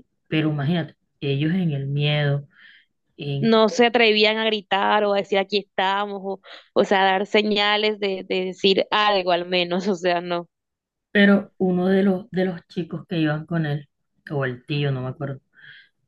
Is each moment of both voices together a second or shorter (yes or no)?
yes